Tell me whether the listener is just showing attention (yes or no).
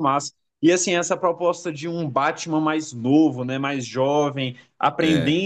yes